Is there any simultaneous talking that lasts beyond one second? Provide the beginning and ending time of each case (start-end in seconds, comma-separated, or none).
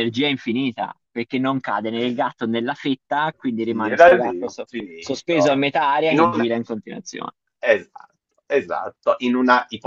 3.6-5.5